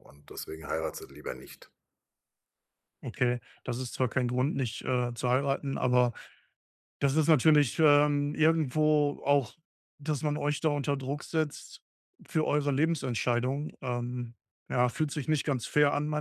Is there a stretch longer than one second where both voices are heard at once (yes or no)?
no